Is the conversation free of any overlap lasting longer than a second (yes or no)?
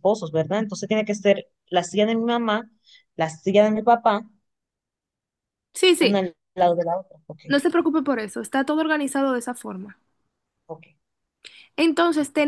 yes